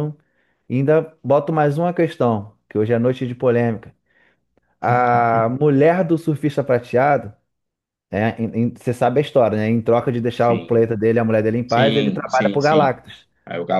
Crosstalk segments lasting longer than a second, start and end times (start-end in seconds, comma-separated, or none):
11.7-13.0